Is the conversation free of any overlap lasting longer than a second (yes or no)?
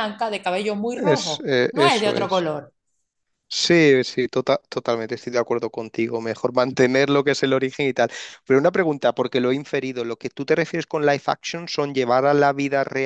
no